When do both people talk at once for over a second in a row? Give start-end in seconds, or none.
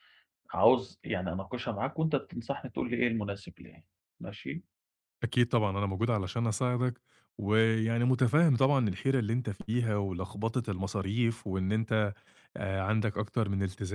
none